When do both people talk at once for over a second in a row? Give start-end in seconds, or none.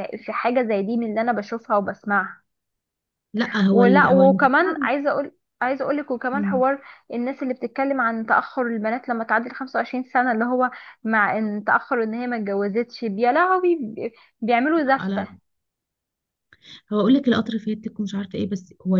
3.7-4.9